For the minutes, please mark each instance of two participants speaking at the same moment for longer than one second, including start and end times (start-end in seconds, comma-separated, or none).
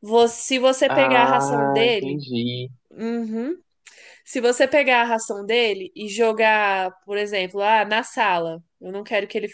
0.9-2.2